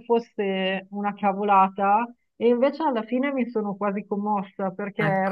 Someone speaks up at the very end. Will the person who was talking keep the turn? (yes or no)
yes